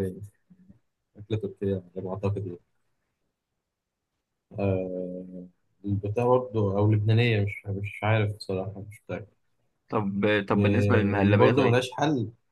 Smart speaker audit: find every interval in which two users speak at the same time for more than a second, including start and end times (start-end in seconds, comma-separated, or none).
10.6-11.8